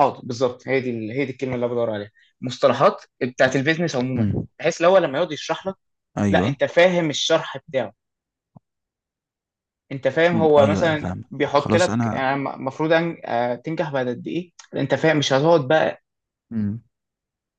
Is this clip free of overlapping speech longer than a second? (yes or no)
no